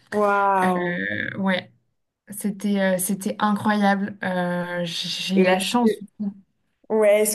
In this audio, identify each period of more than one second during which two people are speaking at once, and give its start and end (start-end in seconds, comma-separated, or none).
none